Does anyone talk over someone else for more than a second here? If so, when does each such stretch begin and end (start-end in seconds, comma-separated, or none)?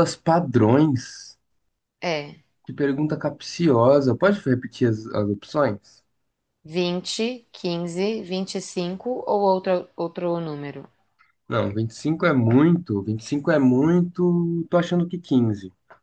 none